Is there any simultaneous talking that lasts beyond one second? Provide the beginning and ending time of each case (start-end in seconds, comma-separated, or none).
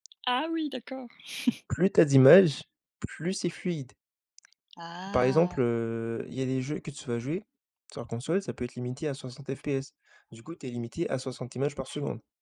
none